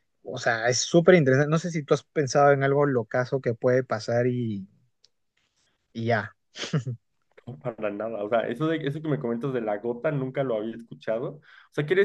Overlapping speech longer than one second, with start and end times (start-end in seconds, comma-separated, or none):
none